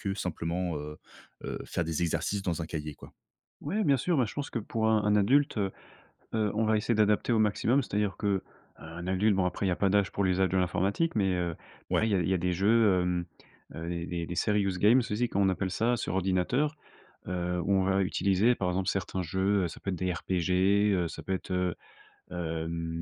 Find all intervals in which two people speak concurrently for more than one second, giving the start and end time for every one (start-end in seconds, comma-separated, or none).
none